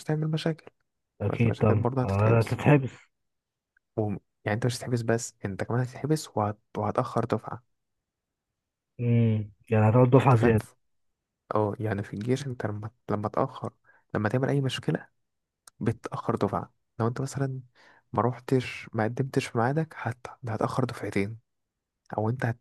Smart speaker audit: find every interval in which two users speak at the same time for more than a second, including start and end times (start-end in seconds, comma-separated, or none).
1.3-2.6